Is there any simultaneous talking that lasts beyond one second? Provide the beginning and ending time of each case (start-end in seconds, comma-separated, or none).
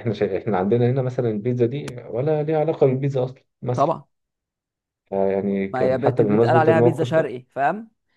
5.7-7.4